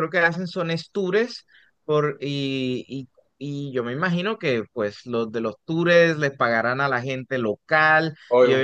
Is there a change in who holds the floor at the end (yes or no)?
yes